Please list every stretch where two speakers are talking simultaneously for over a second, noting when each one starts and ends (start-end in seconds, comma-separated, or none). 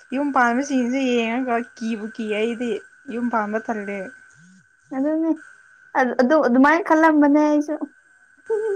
none